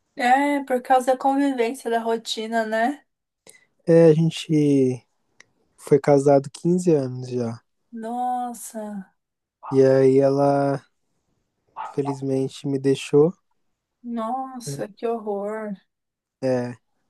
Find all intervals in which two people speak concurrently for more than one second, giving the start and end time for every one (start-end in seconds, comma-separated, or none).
none